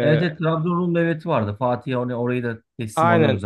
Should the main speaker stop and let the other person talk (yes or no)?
yes